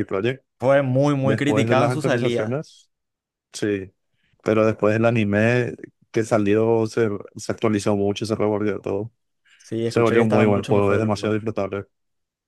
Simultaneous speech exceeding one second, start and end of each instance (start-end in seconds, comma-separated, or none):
1.2-2.6, 9.9-11.3